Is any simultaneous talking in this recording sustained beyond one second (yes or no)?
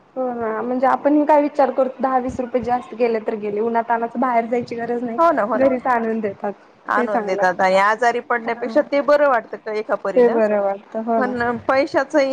no